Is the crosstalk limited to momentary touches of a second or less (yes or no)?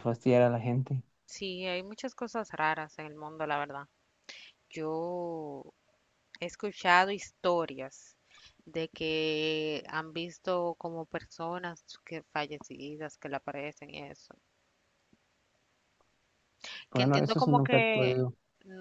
no